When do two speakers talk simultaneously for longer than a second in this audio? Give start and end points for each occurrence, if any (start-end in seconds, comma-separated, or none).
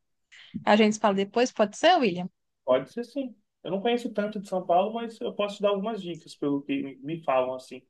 none